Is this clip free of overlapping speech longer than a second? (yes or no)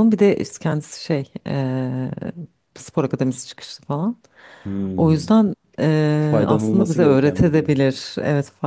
no